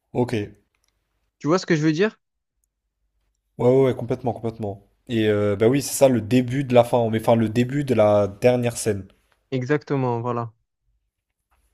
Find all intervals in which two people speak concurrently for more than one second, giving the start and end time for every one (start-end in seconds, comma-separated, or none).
none